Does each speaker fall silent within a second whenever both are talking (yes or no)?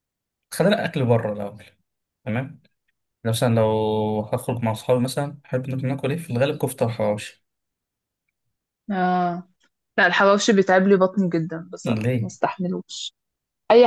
yes